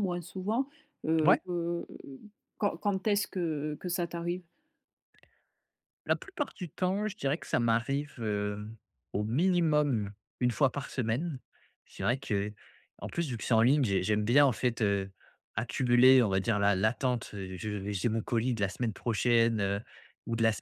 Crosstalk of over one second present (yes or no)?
no